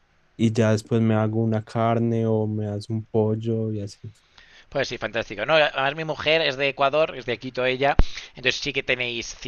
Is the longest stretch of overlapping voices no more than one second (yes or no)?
yes